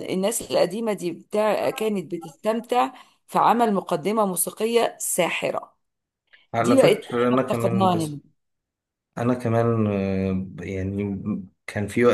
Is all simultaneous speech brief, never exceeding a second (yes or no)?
no